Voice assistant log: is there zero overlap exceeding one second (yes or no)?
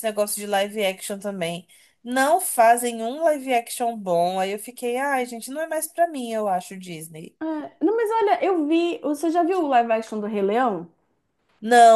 yes